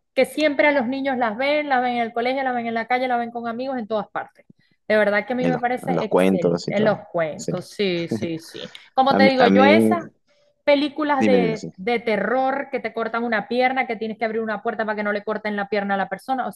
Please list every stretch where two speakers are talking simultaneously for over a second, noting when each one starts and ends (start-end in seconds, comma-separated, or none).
5.4-7.5